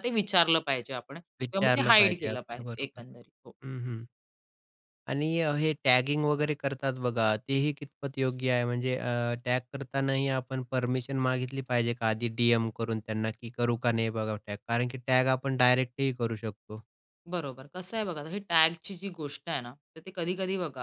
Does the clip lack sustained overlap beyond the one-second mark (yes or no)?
no